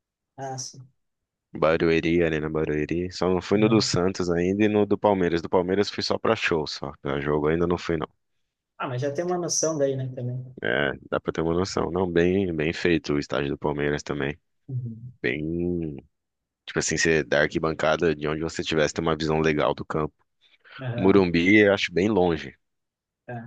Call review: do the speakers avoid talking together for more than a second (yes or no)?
yes